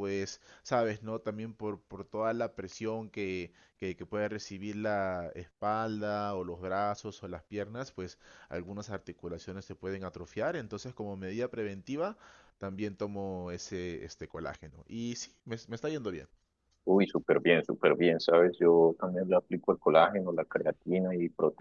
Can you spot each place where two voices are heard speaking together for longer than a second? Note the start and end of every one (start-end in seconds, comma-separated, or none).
none